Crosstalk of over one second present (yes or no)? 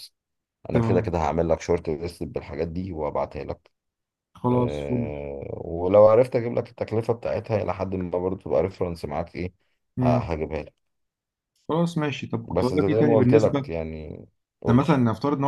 yes